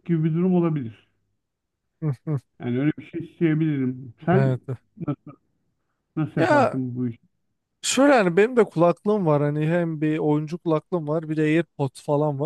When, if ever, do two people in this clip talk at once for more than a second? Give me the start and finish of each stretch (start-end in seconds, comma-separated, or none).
none